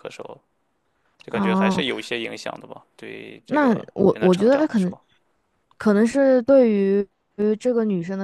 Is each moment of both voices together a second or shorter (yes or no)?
no